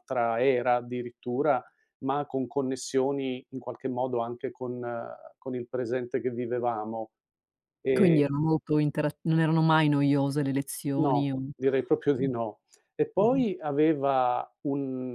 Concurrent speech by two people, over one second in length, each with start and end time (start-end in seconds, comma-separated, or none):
none